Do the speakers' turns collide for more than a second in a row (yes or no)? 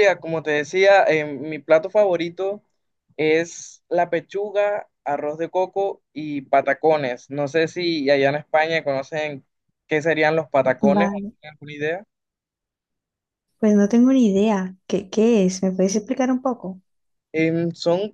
no